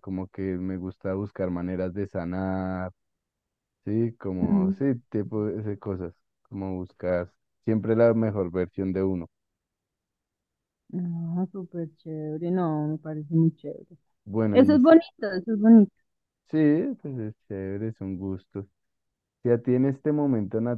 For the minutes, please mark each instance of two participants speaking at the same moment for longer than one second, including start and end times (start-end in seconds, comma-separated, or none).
none